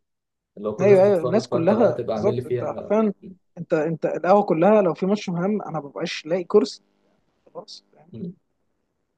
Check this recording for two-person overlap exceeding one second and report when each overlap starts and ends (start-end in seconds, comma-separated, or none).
0.8-3.0